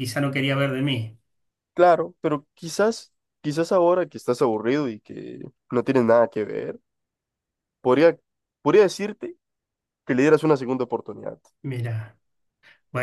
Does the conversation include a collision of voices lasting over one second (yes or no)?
no